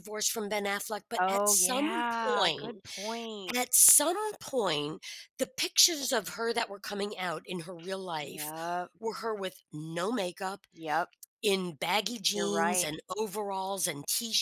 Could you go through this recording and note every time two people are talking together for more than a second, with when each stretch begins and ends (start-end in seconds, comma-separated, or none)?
1.2-2.8